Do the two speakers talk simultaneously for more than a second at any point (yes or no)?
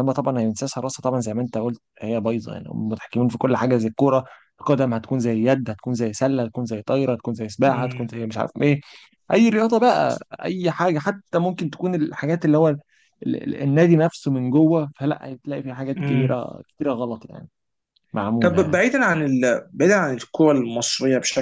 no